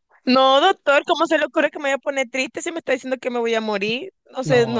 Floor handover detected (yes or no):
yes